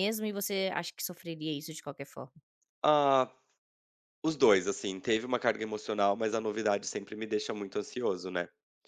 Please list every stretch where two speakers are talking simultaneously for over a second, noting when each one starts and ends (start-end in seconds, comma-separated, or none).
none